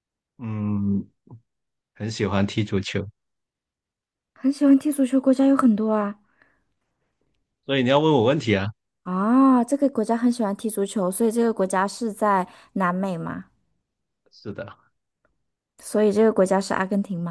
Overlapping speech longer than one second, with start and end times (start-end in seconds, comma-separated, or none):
none